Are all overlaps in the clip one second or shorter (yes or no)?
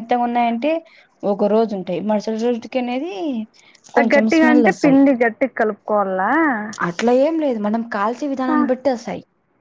yes